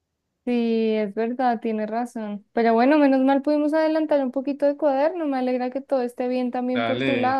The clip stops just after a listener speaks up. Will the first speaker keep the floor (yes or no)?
no